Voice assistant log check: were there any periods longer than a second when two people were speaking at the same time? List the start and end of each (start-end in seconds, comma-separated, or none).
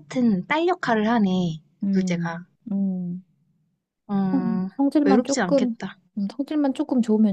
4.3-5.8